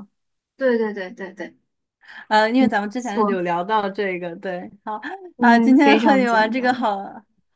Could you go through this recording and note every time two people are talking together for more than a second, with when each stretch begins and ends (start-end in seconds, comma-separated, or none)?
5.4-6.9